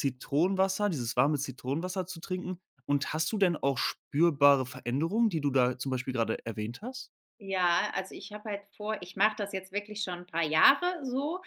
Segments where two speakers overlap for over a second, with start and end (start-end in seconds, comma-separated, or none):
none